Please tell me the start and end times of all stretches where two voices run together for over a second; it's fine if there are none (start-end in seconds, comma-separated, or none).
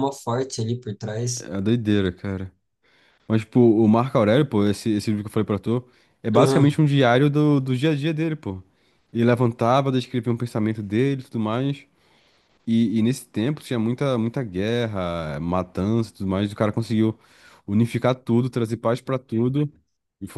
none